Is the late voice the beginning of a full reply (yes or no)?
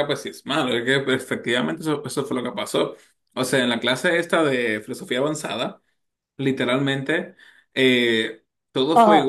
yes